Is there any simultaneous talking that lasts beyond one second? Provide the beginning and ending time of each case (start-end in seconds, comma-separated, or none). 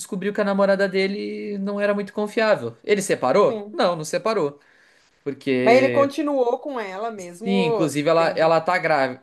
7.2-8.5